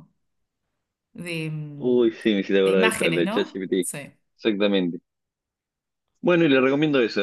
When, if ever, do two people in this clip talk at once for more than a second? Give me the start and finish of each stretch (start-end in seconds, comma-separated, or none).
2.6-3.9